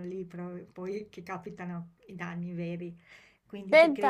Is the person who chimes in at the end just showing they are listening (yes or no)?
yes